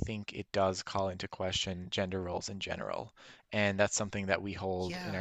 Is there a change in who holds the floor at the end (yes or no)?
no